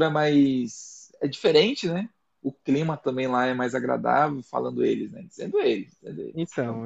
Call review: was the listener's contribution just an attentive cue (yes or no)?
no